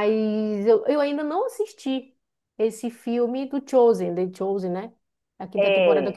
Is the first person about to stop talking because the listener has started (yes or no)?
no